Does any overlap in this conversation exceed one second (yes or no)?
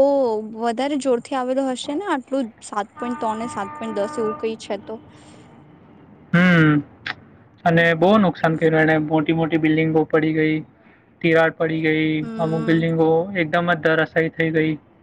no